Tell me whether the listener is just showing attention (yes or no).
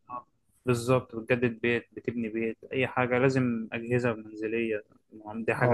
no